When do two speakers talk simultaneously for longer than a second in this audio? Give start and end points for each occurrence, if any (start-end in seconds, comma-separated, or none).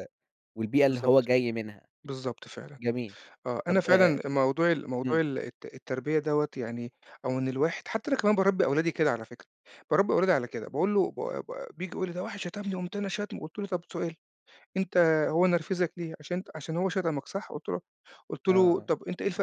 none